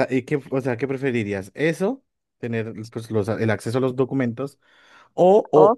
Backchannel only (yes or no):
yes